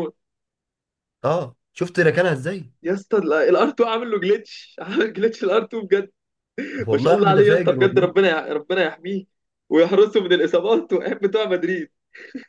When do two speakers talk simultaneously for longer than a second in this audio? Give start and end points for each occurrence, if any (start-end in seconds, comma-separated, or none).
6.9-8.1